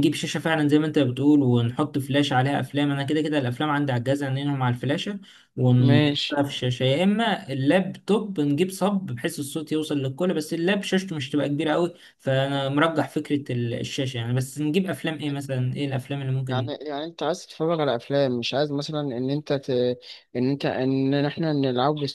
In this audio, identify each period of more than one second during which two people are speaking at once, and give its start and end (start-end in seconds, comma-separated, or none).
none